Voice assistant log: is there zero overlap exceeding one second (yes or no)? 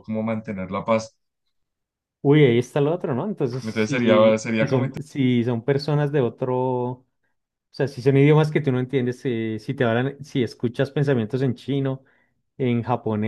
no